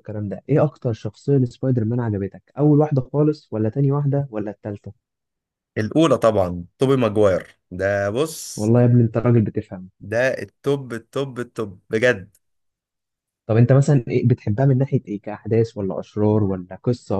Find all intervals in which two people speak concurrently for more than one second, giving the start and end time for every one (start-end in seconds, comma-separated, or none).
none